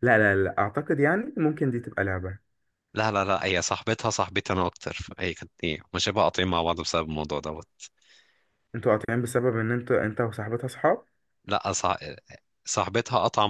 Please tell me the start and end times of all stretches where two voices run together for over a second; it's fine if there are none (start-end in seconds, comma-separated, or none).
none